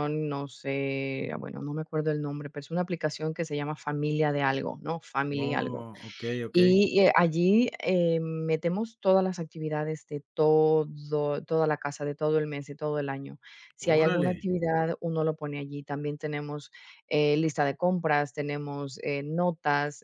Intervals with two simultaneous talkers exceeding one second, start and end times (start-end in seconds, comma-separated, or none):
none